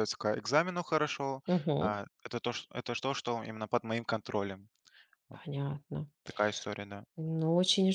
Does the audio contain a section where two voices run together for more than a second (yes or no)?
no